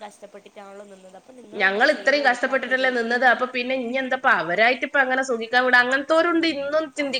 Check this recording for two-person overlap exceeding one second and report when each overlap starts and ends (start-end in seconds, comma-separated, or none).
1.6-2.9